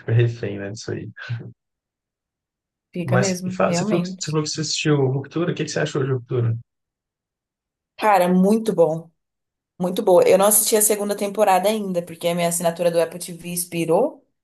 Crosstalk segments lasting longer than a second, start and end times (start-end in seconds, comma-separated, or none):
3.0-4.4